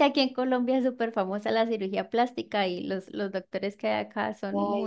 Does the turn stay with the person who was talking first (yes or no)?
no